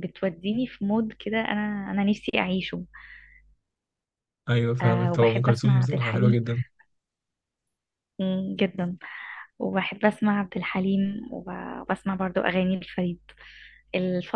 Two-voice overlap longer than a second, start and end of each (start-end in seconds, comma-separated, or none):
4.8-6.4